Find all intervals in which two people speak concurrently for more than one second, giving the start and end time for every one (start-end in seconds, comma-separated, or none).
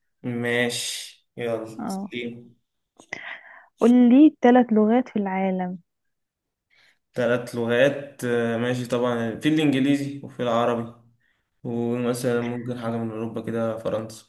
none